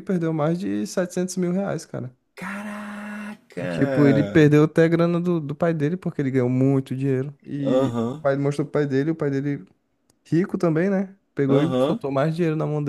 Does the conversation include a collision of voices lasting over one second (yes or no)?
no